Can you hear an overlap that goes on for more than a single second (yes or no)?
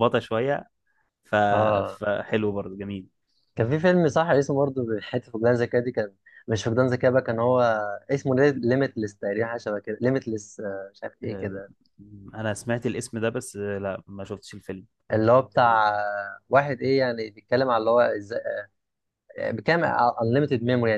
no